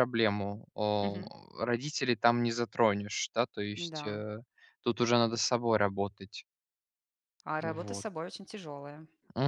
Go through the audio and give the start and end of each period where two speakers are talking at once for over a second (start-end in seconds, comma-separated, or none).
none